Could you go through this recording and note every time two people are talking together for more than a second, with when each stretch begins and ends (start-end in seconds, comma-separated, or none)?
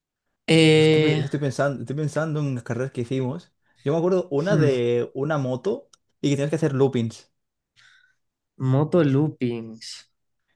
none